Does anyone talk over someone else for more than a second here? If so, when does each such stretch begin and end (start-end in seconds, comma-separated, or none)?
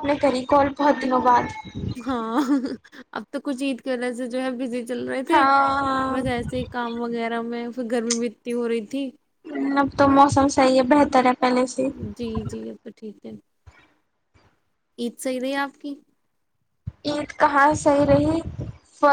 none